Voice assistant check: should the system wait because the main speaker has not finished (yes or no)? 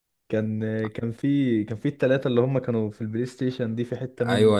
no